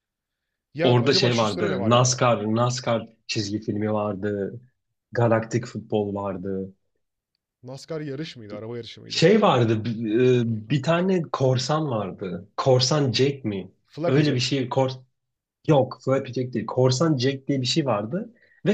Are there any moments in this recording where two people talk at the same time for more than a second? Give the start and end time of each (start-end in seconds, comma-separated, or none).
0.8-2.2